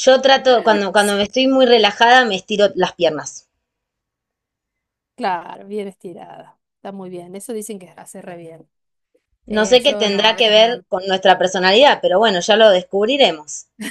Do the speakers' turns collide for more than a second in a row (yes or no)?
yes